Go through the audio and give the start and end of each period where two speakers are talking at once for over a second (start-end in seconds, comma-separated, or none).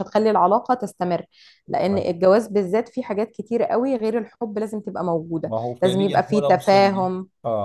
5.4-7.1